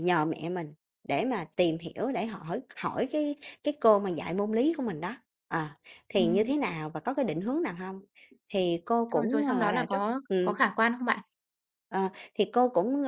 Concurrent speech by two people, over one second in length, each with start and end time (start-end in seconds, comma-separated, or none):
9.2-10.7